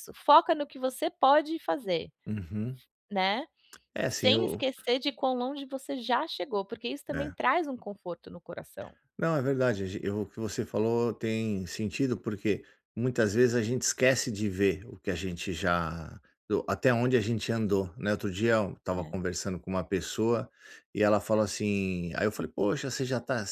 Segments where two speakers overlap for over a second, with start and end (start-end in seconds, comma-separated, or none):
none